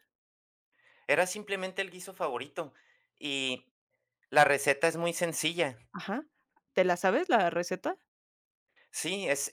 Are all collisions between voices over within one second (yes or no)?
yes